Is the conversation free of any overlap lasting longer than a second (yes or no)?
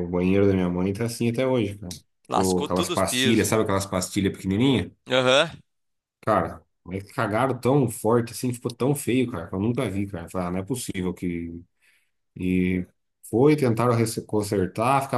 no